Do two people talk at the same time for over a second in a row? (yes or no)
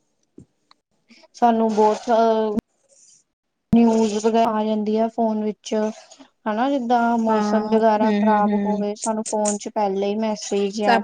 yes